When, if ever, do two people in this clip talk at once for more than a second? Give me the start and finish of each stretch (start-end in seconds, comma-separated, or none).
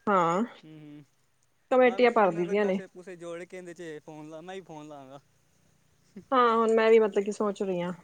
none